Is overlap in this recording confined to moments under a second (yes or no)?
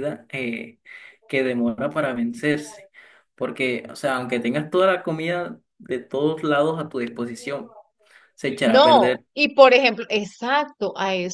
yes